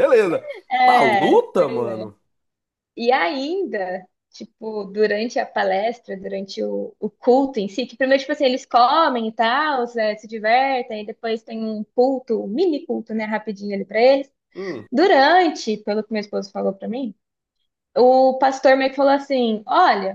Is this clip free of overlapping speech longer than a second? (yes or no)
no